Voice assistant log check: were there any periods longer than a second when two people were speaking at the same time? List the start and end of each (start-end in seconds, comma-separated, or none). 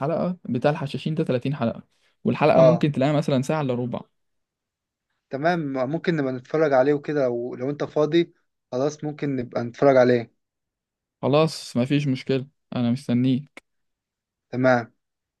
none